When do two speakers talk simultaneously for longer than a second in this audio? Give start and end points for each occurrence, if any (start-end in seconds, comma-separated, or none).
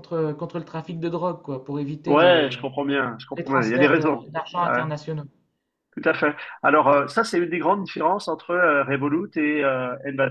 3.4-4.8